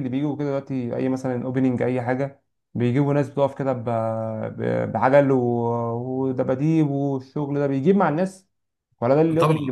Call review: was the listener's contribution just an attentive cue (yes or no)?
no